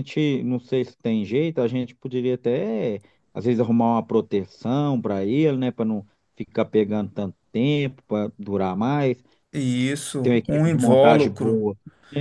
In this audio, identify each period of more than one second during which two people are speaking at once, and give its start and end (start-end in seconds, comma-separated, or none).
10.2-11.6